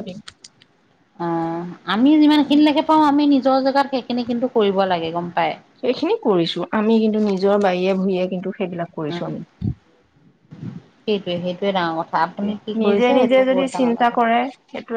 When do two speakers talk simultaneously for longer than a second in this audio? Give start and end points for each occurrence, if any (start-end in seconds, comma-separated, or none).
12.2-14.1